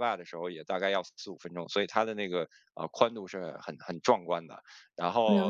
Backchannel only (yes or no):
yes